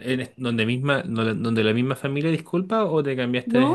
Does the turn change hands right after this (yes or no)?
yes